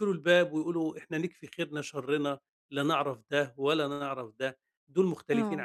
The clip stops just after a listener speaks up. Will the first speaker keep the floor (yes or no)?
yes